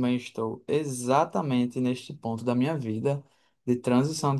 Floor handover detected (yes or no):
no